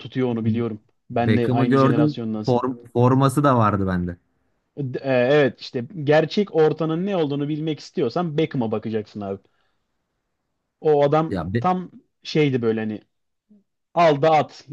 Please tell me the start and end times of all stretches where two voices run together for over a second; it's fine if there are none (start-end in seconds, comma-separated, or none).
1.1-2.6